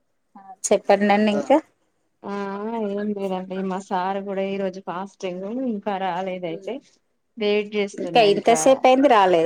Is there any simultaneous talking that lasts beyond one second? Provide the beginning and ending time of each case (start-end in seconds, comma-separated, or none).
none